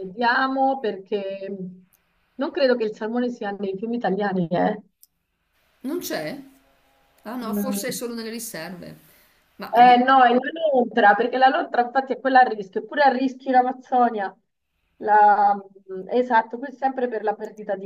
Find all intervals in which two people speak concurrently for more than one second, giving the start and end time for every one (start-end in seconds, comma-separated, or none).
none